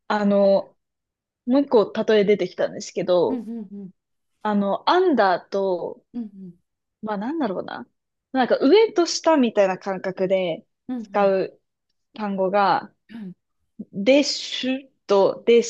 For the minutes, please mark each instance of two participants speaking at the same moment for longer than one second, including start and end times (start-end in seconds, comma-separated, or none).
none